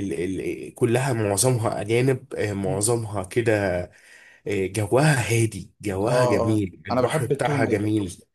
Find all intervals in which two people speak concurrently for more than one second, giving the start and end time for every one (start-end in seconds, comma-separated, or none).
6.1-7.8